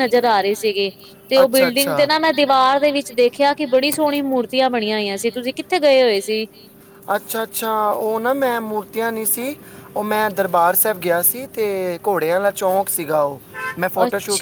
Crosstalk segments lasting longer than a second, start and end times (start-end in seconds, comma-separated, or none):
none